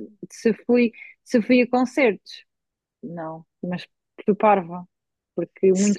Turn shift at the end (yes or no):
no